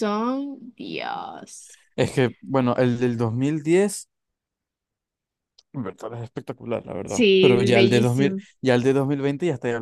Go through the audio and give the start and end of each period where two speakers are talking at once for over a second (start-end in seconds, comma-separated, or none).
7.0-8.4